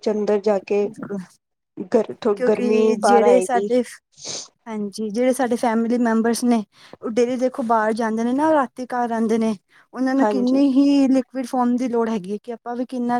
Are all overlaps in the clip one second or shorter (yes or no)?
no